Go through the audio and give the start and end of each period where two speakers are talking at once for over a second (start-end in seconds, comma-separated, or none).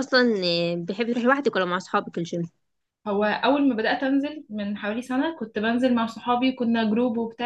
none